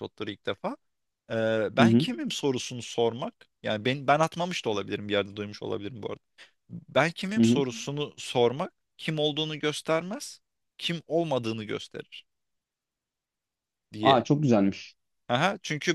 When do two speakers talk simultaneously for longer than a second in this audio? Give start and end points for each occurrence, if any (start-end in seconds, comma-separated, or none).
none